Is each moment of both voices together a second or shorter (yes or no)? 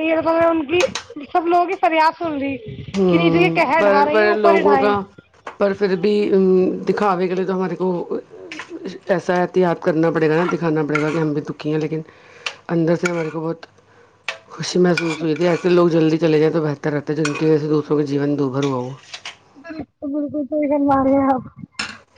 no